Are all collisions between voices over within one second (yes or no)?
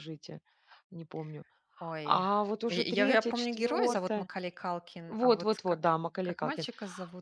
no